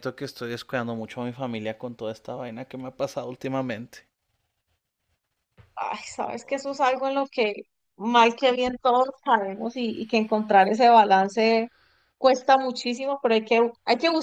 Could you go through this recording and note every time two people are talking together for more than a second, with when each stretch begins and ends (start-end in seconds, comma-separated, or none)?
none